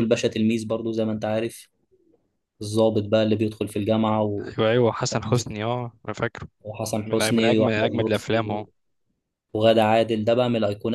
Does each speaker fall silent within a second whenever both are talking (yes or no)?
no